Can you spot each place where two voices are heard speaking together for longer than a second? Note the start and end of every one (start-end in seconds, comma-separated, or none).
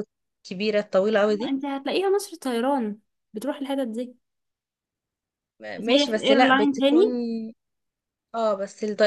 5.8-7.1